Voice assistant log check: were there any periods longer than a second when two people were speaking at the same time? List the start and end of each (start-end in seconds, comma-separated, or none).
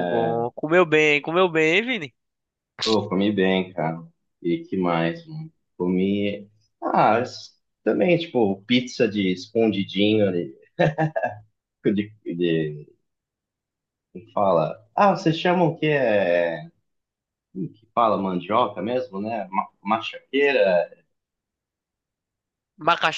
none